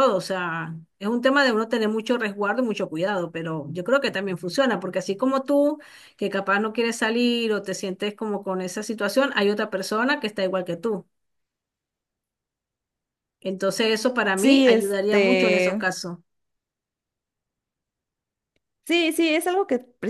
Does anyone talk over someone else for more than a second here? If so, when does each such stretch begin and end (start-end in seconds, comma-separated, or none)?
14.3-15.8